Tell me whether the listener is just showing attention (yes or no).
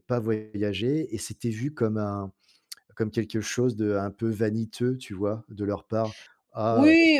no